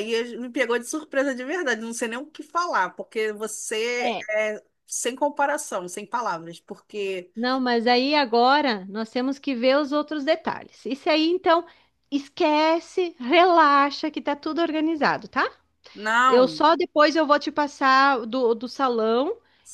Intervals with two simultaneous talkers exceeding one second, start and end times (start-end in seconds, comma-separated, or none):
none